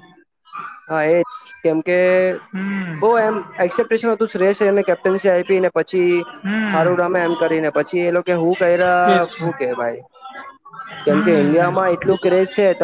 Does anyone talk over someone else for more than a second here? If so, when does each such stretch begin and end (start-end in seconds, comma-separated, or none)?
6.7-8.4